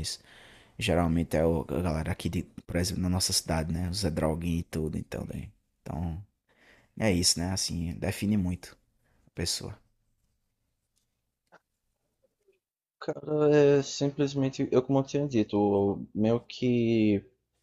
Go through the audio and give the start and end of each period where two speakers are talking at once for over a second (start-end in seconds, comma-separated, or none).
none